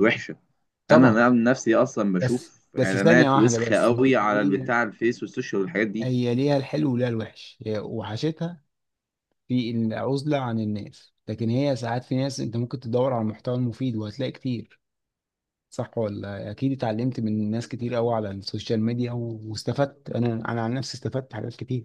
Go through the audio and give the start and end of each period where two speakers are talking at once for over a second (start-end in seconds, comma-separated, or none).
2.2-4.7